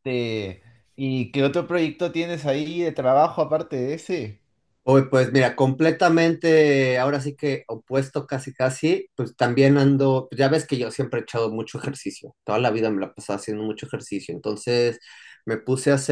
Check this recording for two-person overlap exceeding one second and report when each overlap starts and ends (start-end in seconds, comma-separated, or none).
none